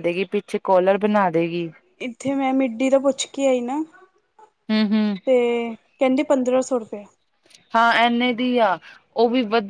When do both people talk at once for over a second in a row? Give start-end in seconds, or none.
none